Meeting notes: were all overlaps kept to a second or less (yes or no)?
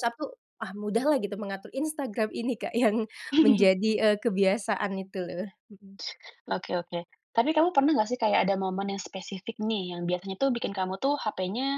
yes